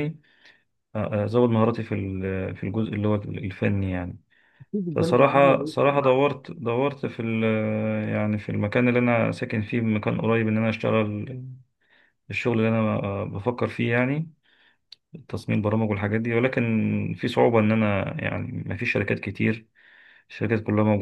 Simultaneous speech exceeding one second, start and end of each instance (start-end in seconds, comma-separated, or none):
4.9-6.2